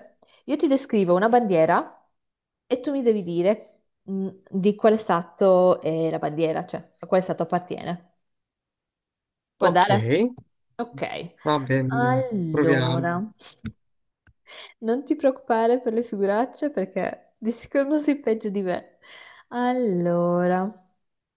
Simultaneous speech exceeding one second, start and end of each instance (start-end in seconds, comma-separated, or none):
11.9-13.2